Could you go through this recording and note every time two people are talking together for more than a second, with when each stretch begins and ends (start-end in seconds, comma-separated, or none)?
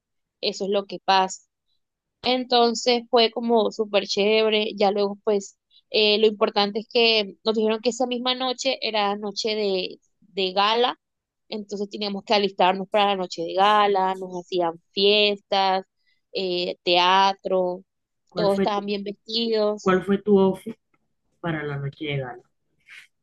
none